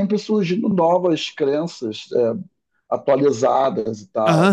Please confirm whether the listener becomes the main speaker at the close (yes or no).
yes